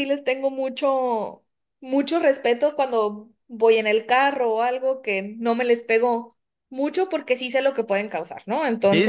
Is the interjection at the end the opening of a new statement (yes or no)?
yes